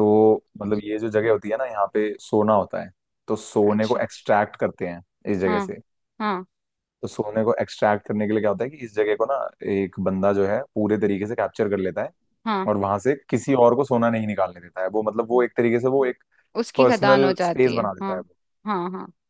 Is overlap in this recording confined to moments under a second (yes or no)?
no